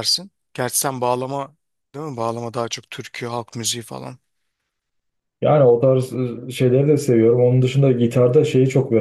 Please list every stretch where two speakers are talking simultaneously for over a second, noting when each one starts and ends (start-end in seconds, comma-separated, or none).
none